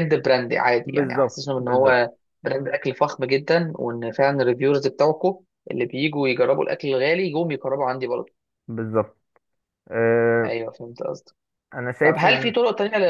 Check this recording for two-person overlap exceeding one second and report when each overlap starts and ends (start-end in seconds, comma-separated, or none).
0.8-2.1